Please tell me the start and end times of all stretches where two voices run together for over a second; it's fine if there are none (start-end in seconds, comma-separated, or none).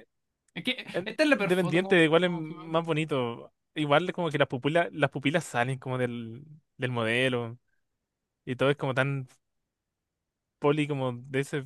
0.9-2.9